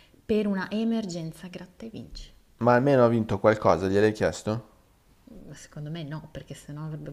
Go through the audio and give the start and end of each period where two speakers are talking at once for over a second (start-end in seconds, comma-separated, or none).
none